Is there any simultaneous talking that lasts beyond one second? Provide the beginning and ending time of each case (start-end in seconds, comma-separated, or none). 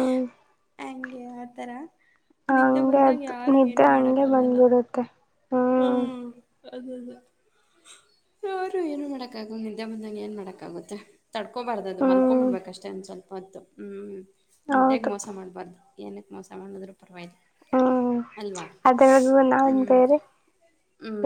2.5-4.6